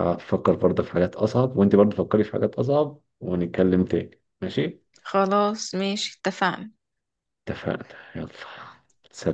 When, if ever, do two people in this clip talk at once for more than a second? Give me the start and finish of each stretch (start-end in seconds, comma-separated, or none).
none